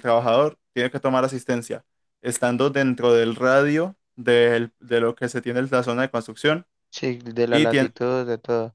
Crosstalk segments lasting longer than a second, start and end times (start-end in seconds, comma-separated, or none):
none